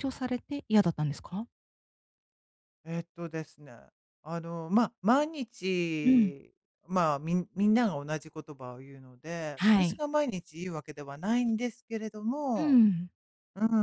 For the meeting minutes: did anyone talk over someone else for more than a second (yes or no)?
no